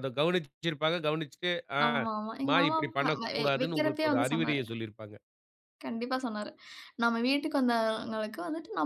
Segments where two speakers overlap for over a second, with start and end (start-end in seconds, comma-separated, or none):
2.5-4.6